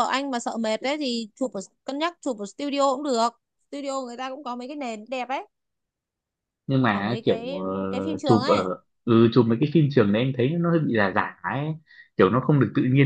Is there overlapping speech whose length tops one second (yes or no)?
yes